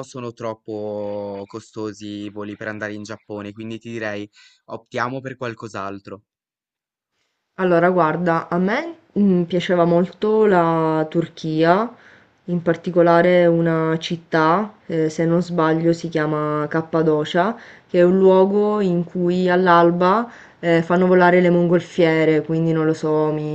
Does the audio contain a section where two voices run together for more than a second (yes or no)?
no